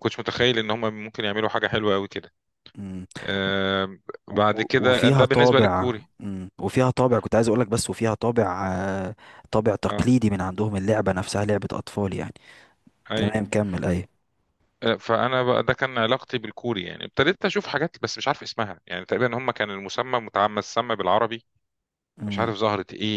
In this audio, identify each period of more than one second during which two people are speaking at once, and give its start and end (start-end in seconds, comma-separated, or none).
4.5-6.0